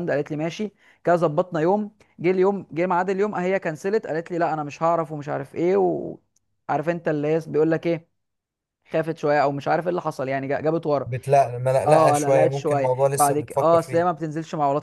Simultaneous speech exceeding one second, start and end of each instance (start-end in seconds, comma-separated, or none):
11.9-14.1